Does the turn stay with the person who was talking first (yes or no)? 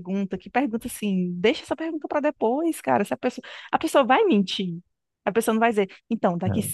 yes